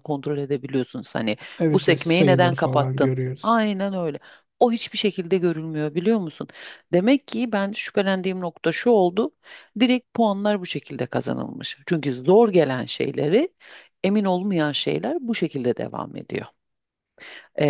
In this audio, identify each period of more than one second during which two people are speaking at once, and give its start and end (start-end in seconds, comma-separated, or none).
1.6-3.6